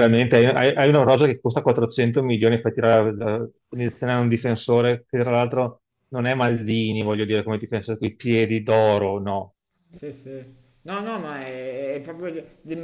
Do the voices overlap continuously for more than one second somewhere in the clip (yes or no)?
no